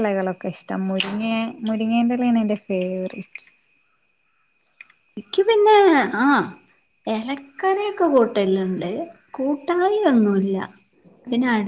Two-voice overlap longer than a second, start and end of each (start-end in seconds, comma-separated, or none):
none